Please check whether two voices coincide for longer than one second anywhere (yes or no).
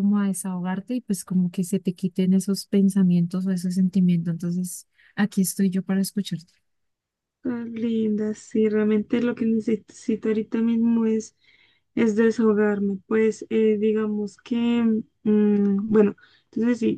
no